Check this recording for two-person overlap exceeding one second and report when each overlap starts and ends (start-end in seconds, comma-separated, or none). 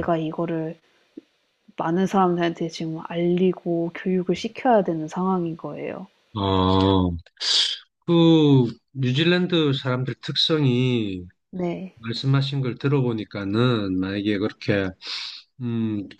none